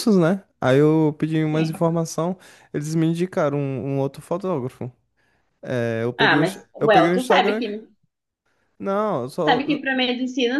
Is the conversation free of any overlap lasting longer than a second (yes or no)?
no